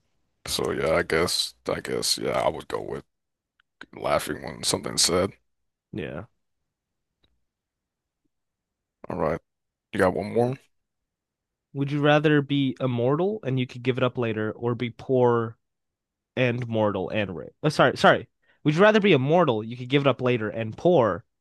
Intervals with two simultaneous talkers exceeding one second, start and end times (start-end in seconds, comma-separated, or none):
none